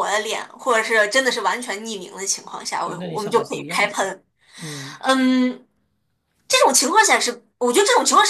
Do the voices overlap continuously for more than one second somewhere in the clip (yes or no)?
yes